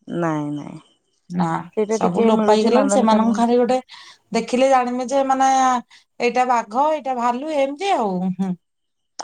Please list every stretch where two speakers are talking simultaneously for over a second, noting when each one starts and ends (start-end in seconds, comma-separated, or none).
2.0-3.4